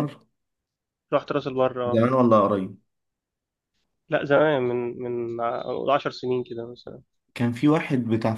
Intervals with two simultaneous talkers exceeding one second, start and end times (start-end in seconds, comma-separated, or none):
none